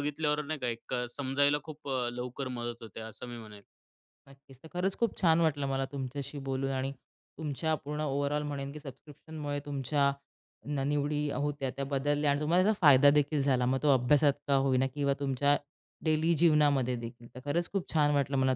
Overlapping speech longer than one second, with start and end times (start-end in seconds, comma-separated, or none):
none